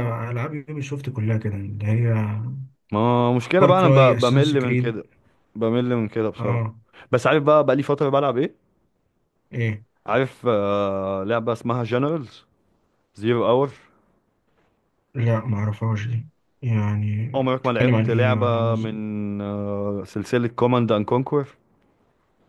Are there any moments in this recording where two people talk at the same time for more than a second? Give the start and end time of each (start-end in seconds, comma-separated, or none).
3.6-5.0, 17.4-19.0